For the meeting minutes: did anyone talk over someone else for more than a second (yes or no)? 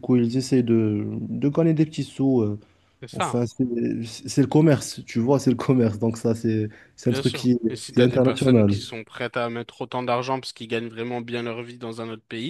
yes